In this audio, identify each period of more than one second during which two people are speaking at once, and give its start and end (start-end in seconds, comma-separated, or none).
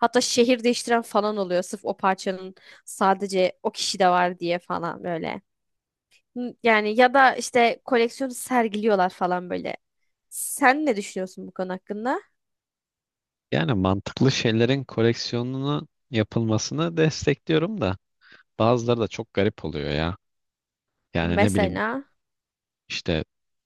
none